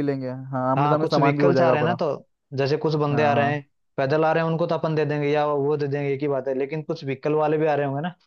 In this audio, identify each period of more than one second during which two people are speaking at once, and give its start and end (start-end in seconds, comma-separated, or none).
0.8-2.0